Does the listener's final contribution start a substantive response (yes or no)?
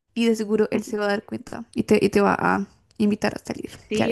yes